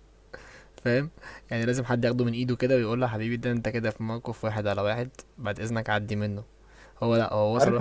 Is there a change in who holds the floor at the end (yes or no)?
no